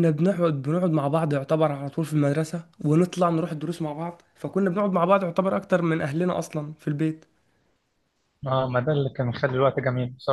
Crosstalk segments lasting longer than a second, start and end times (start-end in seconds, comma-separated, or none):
none